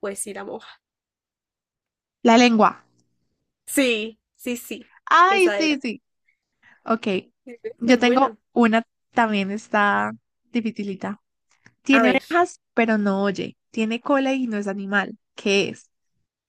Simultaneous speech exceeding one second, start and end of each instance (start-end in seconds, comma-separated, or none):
none